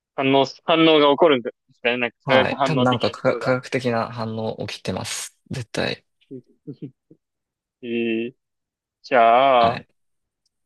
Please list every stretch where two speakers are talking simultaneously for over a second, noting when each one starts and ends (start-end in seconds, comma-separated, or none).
2.2-3.5